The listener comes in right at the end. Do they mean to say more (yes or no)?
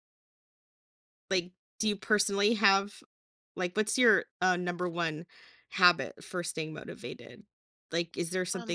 no